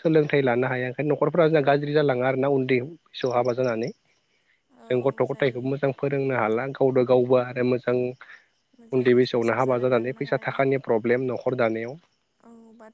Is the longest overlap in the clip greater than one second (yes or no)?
yes